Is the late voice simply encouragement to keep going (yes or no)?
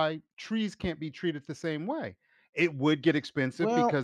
yes